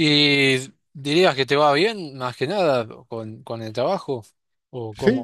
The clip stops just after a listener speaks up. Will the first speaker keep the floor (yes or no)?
no